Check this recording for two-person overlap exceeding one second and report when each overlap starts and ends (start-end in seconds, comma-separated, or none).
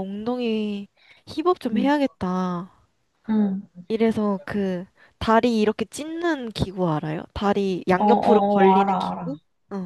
8.0-9.3